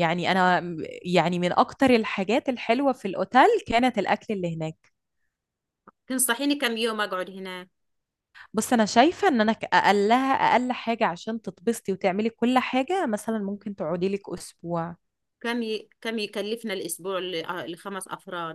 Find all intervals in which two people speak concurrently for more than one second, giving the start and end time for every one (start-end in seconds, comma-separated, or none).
none